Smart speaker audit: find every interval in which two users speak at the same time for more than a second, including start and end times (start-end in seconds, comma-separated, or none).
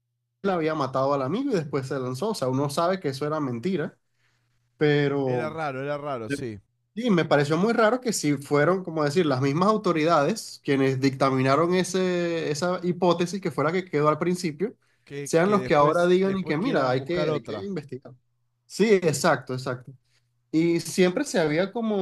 15.2-17.7